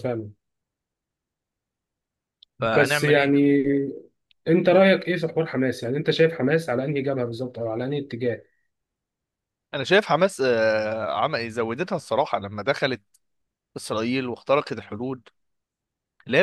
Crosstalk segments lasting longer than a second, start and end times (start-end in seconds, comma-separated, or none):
none